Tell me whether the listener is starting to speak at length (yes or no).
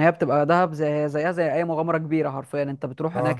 no